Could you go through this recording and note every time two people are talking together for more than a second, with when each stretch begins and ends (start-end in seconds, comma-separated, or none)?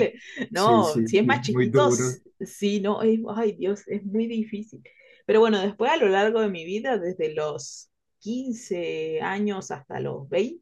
0.5-2.2